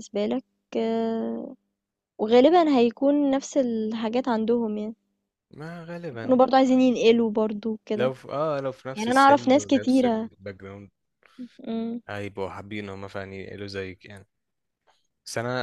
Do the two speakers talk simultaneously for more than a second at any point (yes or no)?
yes